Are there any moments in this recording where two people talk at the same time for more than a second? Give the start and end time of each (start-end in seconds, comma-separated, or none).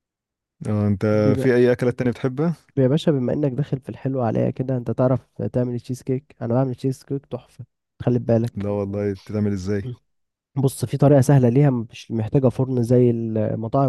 none